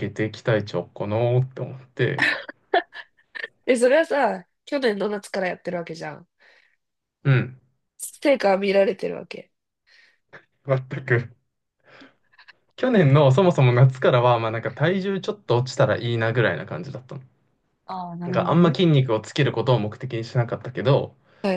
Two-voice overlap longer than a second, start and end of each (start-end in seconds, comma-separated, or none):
none